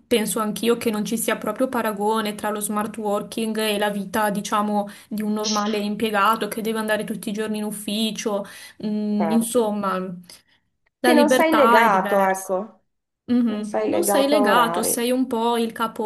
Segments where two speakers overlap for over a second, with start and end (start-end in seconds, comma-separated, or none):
11.0-12.5, 13.4-15.1